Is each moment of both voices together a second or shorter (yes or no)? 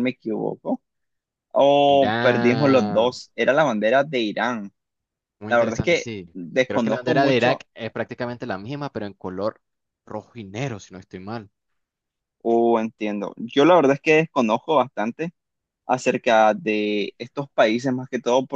no